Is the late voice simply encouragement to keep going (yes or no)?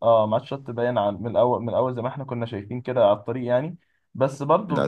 yes